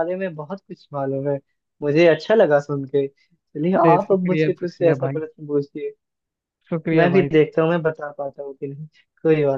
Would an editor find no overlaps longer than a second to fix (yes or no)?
no